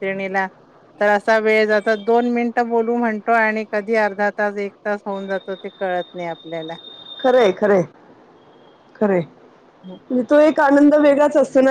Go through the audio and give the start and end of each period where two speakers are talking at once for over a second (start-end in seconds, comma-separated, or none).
none